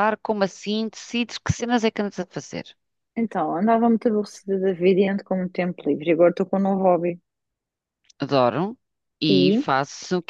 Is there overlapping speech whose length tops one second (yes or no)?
no